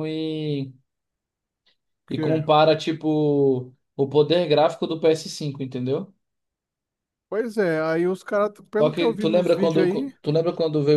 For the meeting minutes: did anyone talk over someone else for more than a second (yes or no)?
yes